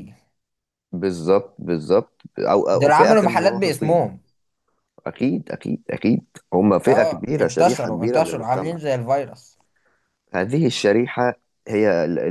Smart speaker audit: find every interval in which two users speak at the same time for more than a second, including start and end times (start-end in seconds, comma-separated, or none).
2.7-4.0, 6.9-8.8